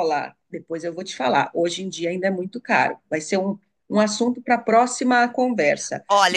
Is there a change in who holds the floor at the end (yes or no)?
yes